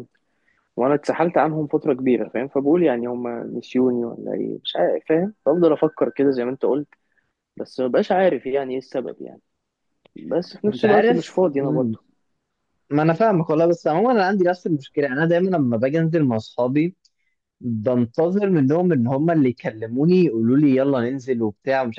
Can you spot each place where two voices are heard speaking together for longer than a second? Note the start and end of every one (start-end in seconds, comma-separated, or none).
10.7-12.0